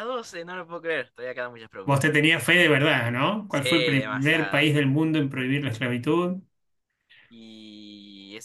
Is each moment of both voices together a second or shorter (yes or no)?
no